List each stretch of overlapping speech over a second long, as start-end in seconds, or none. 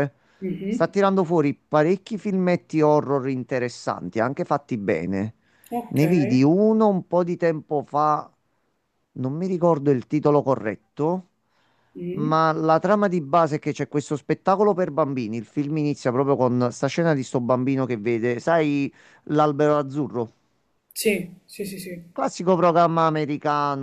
none